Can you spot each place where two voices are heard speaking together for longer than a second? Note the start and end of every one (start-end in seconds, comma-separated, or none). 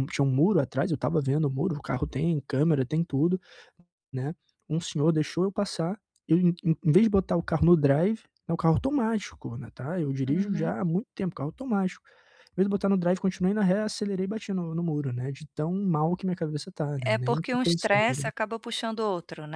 17.1-18.3